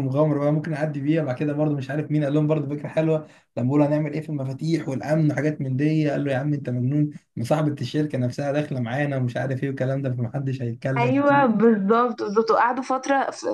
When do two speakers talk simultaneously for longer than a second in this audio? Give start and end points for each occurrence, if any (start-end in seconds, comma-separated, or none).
none